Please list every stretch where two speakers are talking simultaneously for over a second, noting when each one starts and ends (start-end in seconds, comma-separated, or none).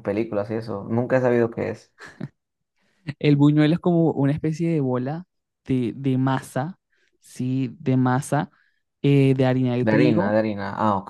none